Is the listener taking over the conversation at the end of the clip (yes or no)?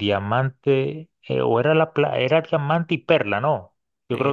yes